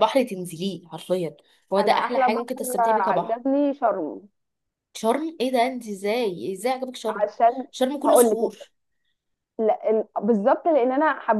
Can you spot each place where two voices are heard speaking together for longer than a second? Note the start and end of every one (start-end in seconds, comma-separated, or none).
1.8-3.4